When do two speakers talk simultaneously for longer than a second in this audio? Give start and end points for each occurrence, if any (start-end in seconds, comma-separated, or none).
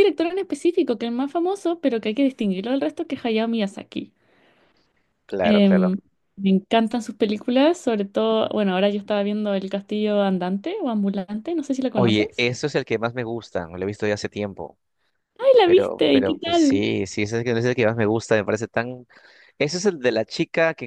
15.6-16.8